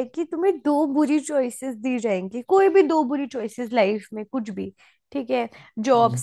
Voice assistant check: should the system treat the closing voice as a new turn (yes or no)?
no